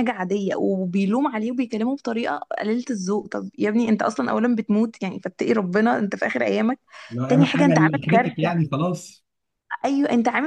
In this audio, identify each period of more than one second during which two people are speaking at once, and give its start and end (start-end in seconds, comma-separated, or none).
7.3-8.6